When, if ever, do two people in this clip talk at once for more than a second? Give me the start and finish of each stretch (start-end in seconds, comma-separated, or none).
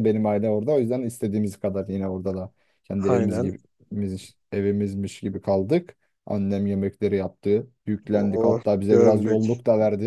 8.1-9.4